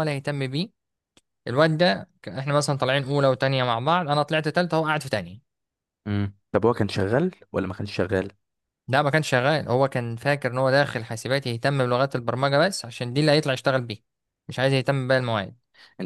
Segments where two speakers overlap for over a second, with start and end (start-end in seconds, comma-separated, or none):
none